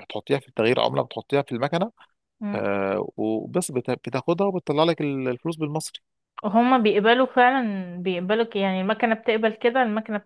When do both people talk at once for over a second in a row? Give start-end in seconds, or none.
none